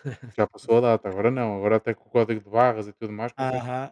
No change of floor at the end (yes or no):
no